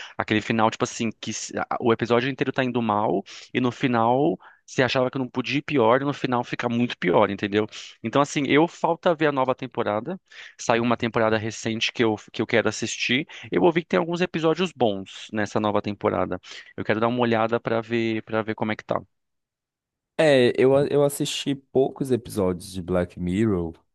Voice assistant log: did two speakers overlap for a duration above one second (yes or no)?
no